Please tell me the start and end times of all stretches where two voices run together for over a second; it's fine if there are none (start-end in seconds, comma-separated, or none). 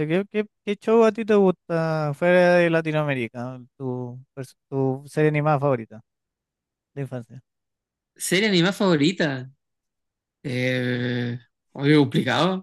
none